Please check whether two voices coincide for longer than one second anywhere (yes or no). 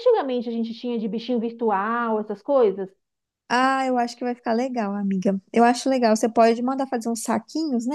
no